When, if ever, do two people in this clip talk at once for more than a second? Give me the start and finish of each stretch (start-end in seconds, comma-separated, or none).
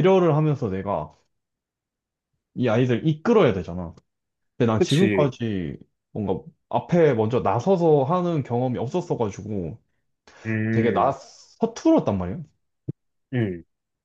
none